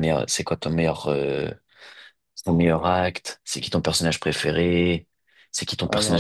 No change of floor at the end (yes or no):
yes